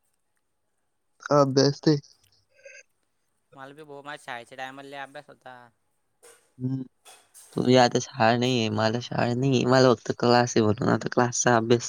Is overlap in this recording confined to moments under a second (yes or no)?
yes